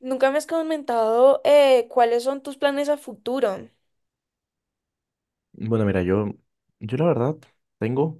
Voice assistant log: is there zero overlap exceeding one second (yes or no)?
yes